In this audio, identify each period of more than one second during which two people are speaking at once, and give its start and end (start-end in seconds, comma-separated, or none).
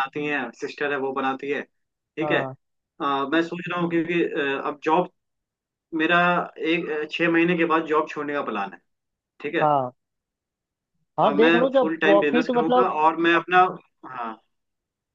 11.2-12.9